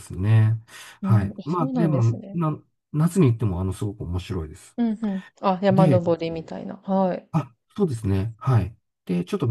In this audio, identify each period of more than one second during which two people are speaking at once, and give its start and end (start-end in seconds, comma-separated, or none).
1.0-2.4